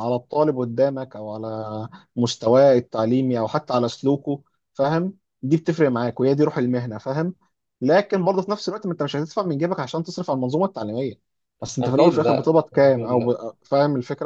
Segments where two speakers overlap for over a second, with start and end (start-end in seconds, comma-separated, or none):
11.8-13.3